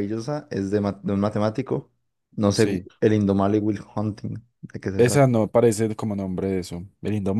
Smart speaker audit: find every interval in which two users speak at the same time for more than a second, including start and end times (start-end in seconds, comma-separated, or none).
none